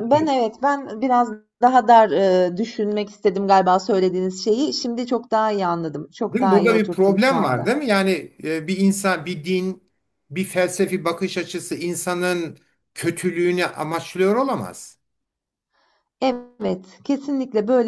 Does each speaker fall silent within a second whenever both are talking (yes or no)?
no